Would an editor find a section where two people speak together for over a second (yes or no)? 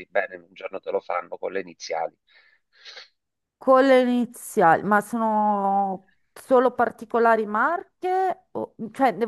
no